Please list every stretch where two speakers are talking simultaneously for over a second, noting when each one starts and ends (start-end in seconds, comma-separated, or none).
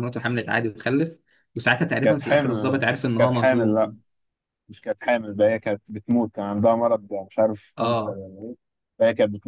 2.0-3.9